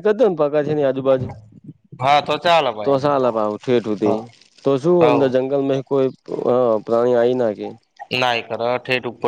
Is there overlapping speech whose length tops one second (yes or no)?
no